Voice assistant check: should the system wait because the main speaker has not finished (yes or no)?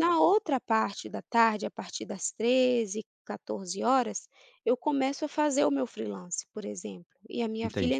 yes